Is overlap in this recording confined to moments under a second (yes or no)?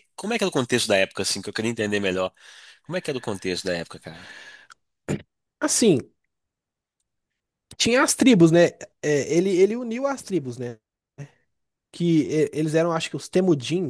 yes